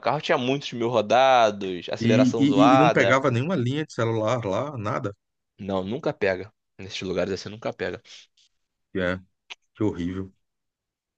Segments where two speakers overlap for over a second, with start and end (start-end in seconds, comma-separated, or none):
2.0-3.2